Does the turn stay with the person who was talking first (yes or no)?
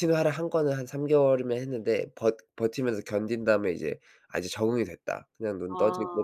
yes